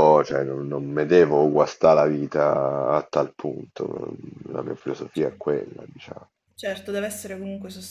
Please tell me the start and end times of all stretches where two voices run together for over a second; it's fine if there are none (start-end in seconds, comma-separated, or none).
none